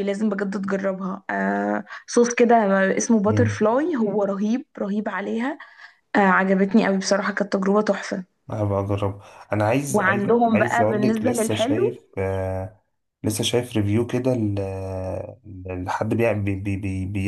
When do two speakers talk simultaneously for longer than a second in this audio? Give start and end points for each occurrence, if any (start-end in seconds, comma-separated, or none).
9.9-11.9